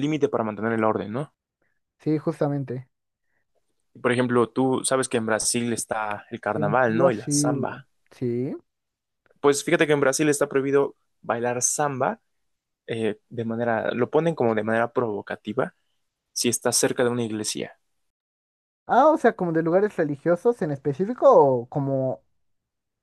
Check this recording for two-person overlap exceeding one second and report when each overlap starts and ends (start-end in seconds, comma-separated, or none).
6.5-7.8